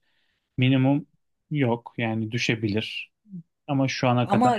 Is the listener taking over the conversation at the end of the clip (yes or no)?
yes